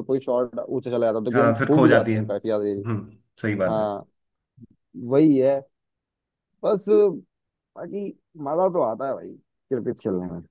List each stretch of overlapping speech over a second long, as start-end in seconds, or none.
1.3-2.8